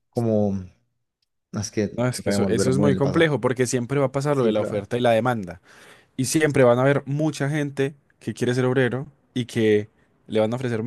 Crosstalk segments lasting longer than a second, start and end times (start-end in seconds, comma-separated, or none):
1.9-3.3